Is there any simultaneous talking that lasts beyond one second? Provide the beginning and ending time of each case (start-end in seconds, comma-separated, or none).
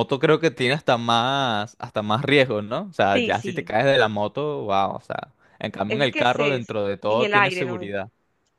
5.9-7.8